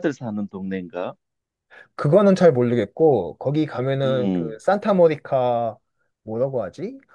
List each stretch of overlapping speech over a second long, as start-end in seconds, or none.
none